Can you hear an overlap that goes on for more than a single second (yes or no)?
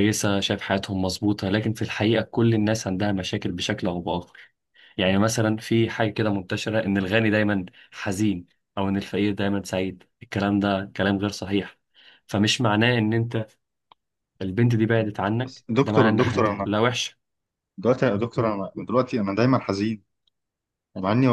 yes